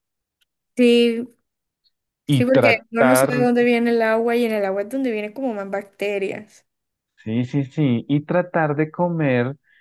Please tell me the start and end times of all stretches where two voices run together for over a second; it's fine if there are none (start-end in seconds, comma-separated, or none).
2.3-3.5